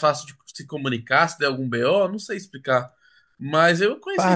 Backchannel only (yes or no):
no